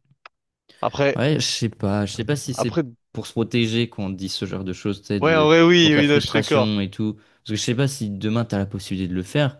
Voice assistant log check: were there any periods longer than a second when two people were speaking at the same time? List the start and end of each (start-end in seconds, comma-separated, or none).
5.2-6.7